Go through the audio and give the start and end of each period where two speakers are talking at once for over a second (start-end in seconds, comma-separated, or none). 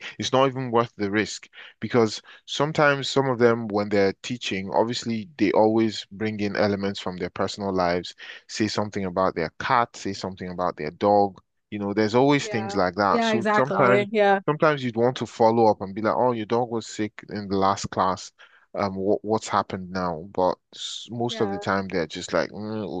12.4-14.1